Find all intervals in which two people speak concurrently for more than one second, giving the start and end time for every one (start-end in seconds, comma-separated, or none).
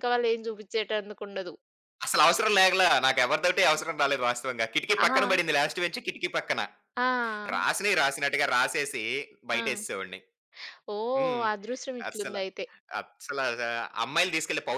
none